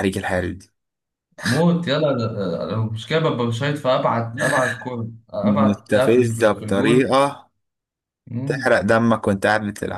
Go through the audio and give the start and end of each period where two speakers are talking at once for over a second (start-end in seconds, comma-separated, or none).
5.4-7.1